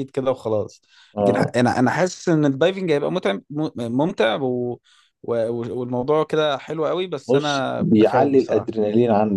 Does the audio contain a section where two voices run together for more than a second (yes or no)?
yes